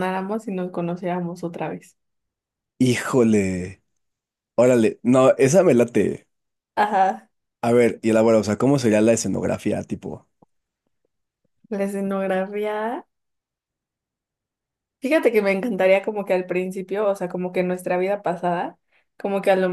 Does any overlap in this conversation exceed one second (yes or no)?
no